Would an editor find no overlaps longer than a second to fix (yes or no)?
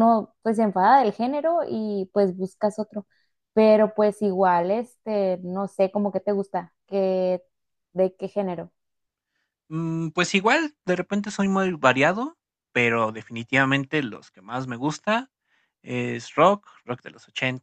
yes